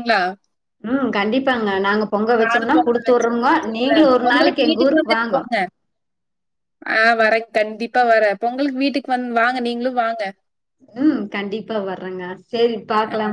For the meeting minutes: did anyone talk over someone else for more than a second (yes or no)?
yes